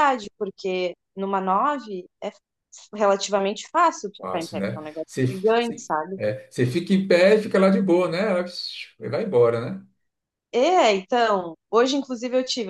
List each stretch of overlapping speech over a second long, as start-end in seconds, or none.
4.2-6.2